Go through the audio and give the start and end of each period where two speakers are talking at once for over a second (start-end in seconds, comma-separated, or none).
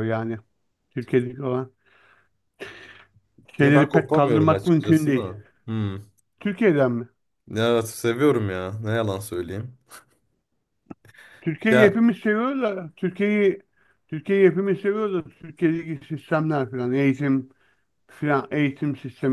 3.6-5.3